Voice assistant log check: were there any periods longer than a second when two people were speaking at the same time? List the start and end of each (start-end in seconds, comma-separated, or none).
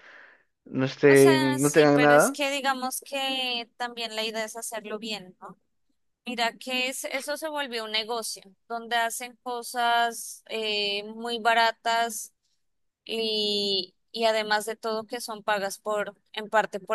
1.1-2.4